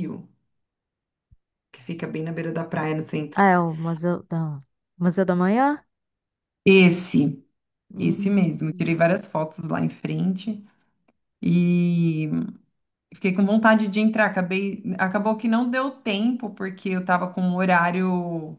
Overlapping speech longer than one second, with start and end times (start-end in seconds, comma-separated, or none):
none